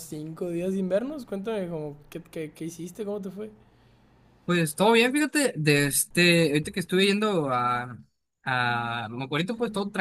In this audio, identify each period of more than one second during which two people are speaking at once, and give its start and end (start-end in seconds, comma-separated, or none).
none